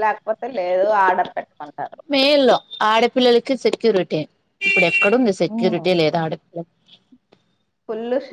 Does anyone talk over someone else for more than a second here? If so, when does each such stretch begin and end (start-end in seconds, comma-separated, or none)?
none